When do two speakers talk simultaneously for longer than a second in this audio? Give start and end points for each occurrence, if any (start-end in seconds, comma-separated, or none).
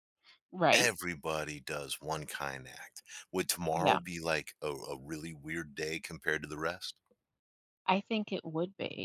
none